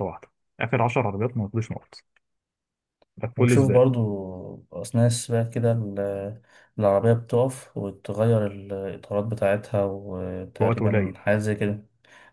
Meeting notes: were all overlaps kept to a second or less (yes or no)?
yes